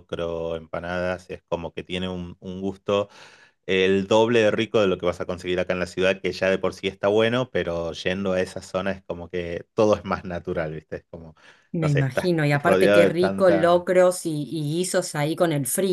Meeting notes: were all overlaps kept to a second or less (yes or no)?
no